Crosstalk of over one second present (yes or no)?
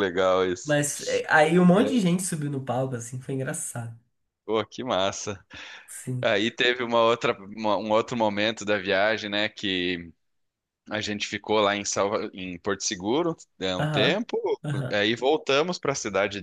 no